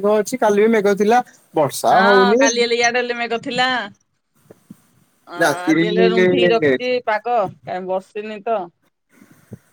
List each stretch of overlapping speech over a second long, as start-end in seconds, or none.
5.4-6.8